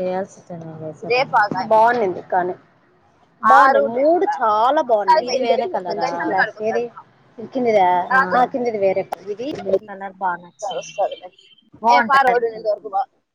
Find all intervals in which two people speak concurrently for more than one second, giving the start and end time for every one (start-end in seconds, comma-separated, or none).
3.5-6.8